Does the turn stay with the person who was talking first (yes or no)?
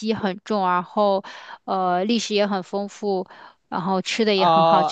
no